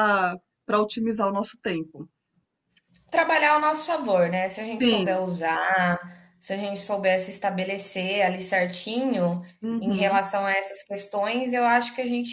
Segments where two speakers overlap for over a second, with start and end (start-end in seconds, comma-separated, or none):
none